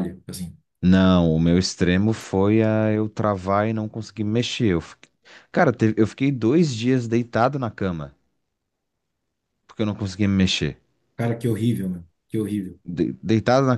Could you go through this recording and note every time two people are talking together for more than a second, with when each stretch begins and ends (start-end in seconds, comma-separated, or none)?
none